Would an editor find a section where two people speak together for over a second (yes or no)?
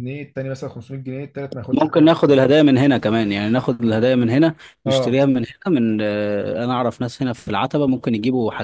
no